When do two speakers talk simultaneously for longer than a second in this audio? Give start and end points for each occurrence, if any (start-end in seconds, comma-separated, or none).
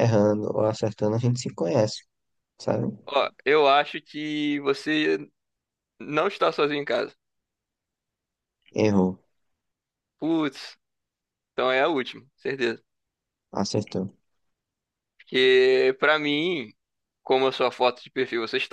none